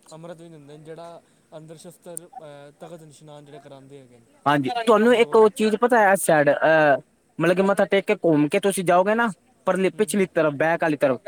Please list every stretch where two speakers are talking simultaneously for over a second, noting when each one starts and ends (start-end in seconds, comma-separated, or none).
4.5-5.8